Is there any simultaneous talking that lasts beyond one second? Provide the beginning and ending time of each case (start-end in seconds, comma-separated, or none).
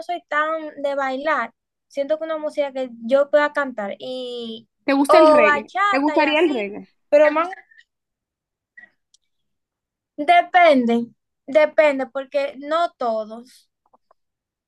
5.1-6.7